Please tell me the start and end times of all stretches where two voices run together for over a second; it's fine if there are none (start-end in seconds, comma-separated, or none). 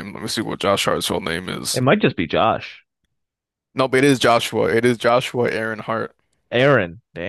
none